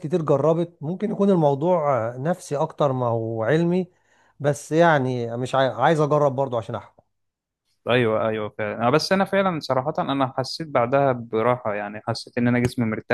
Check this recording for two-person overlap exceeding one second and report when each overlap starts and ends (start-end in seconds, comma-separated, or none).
none